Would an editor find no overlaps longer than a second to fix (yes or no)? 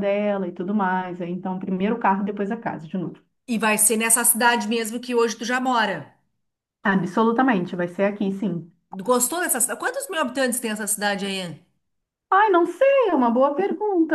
yes